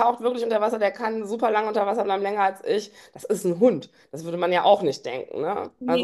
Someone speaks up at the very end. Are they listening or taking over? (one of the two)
listening